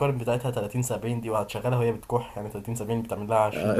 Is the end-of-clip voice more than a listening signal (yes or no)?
yes